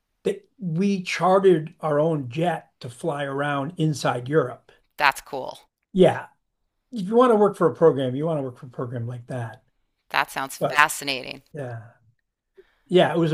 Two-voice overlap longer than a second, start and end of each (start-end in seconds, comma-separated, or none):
none